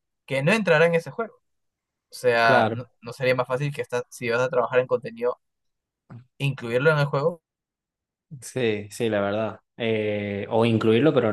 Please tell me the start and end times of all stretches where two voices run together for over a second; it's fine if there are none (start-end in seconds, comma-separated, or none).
none